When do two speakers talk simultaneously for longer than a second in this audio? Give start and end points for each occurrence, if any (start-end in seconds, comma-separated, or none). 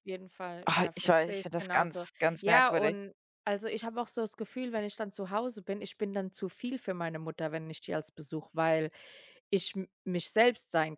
0.7-3.0